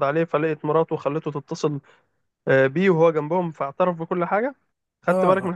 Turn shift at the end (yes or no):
yes